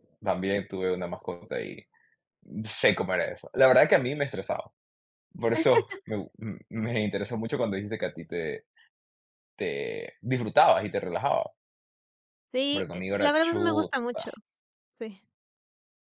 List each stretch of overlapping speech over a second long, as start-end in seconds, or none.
12.7-14.2